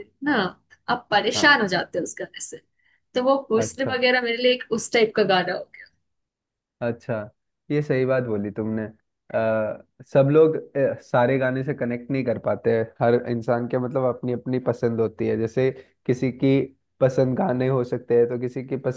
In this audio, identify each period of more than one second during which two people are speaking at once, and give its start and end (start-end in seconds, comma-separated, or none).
none